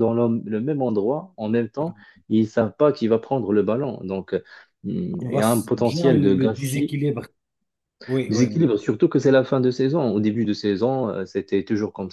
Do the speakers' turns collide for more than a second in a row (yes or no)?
yes